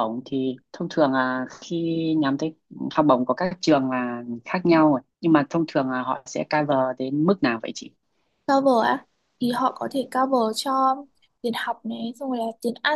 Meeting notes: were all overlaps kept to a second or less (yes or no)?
yes